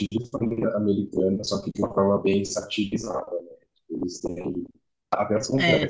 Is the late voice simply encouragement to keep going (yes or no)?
yes